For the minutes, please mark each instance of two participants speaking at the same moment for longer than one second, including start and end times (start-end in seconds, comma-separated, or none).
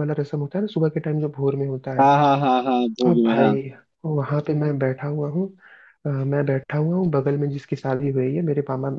none